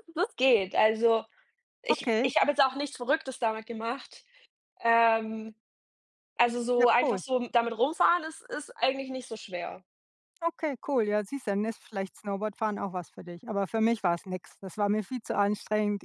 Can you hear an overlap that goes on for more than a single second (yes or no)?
no